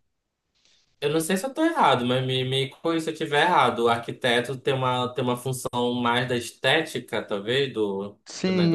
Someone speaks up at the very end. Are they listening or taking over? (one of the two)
taking over